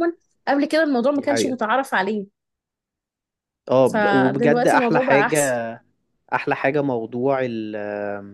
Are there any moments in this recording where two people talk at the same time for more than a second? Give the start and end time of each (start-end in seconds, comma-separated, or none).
3.8-5.6